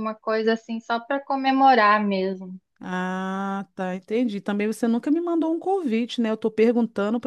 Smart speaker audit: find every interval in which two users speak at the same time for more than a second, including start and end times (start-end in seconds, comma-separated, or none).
none